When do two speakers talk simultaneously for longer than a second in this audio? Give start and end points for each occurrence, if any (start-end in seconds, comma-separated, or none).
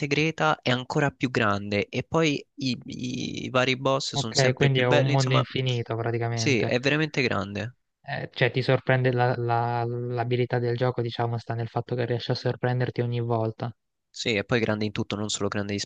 4.1-5.5